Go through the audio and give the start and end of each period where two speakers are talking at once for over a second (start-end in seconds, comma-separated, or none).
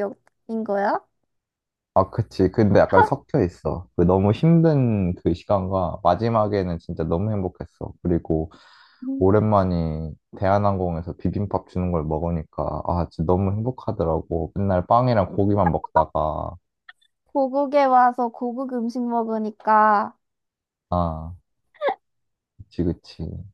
none